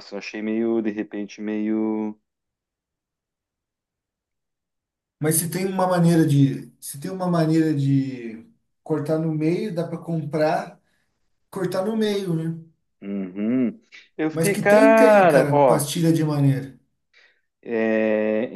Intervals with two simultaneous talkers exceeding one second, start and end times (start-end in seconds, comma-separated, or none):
14.3-15.9